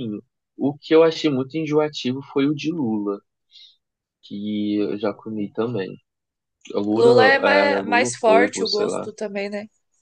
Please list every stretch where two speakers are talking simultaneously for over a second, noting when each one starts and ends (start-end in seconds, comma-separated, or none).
6.9-9.1